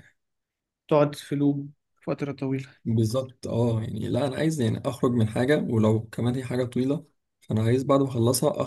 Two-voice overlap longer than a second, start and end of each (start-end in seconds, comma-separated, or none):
none